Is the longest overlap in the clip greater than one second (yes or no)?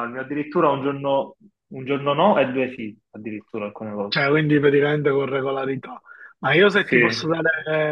no